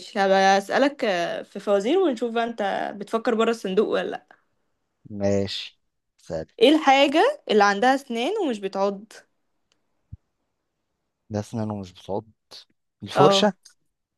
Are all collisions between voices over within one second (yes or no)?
yes